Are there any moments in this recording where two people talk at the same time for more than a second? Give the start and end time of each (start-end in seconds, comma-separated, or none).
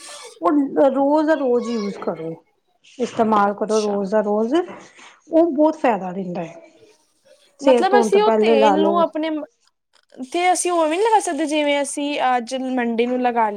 7.7-9.0